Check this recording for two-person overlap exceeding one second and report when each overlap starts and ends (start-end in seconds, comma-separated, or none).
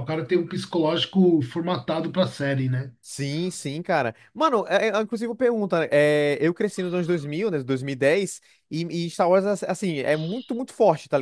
none